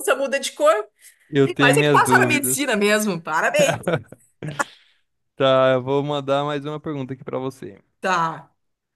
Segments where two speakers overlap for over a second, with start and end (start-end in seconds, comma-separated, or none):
1.4-2.8